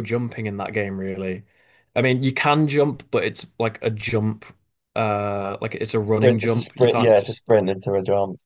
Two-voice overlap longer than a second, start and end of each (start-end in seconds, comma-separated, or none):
6.2-7.4